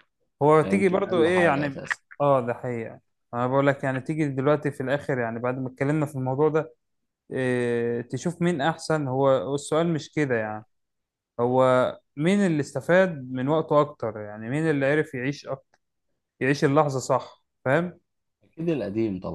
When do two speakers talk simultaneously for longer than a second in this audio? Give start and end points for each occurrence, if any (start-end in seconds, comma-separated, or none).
0.6-1.8